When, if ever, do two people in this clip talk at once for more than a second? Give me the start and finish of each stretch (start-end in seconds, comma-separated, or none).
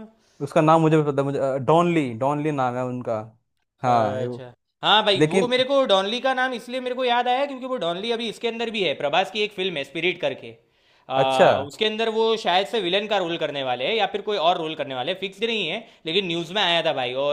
none